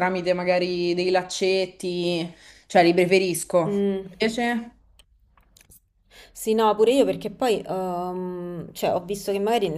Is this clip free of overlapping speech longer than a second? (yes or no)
yes